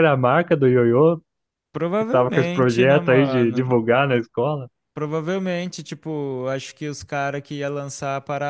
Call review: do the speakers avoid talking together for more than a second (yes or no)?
no